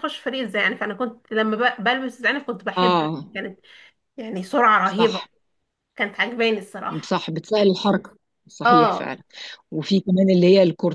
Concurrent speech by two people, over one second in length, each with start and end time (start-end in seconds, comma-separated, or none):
none